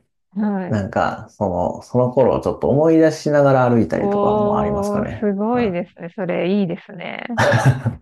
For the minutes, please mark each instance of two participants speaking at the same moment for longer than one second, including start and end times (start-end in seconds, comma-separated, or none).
4.0-5.9